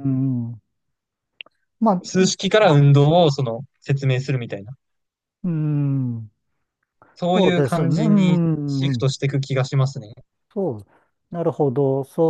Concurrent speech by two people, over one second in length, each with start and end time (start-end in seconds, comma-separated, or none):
7.3-9.1